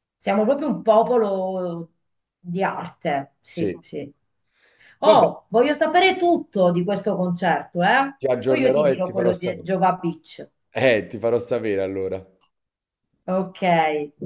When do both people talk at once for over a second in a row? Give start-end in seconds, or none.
8.2-9.7